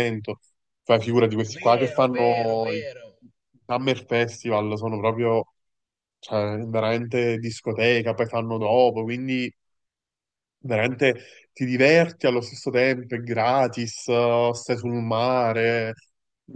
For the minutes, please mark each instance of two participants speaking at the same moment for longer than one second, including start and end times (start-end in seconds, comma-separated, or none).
1.5-2.8